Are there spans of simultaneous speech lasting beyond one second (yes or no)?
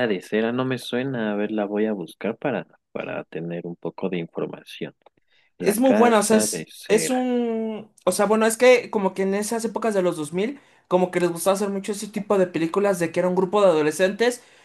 yes